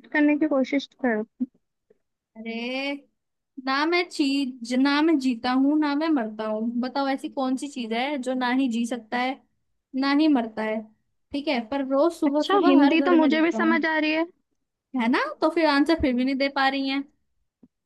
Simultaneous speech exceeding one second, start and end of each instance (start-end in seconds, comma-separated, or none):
12.2-13.8